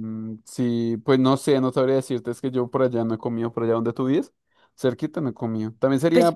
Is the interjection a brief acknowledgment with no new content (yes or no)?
yes